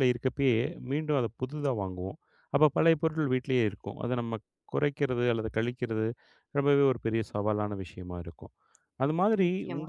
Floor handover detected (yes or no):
no